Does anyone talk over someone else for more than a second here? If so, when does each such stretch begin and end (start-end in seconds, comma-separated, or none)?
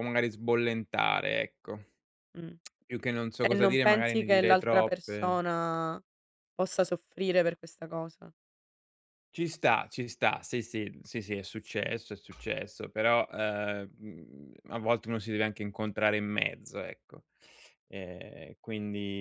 3.4-5.4